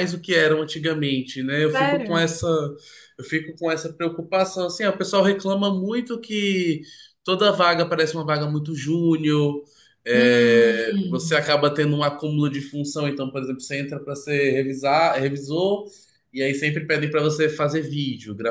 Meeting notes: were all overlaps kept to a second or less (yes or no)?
no